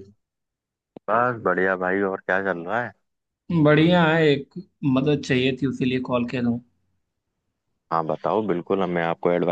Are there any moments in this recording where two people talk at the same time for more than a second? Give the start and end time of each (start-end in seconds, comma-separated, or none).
none